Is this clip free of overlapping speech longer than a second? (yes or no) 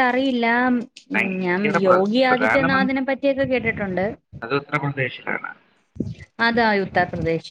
no